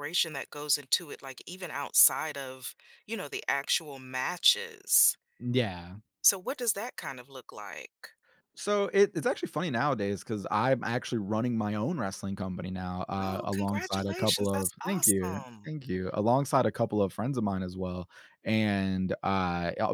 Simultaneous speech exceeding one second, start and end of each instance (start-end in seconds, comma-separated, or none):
13.2-15.8